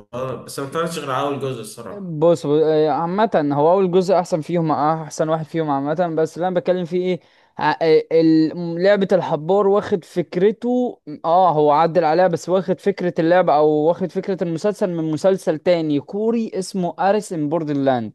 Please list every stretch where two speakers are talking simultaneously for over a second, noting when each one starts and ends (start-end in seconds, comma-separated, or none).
none